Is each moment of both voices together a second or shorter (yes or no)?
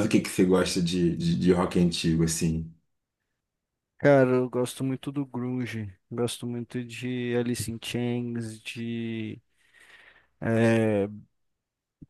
yes